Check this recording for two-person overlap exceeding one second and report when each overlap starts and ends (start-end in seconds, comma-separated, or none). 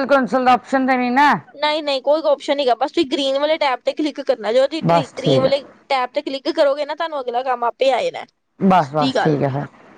none